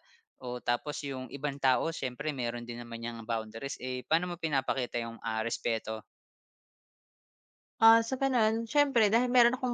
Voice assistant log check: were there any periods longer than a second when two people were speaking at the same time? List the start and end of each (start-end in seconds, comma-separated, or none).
none